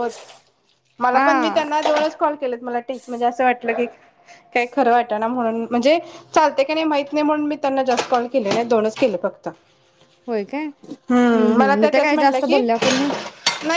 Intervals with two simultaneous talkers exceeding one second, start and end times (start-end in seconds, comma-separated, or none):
11.2-12.6